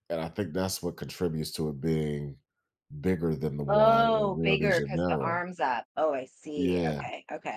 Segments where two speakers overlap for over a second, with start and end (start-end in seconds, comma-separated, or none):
3.7-5.5